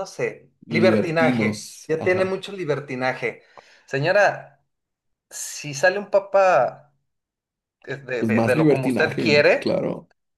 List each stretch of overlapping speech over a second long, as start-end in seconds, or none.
0.7-2.4, 8.2-9.8